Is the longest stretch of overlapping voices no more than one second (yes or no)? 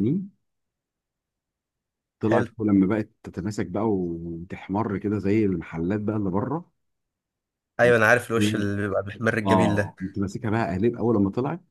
yes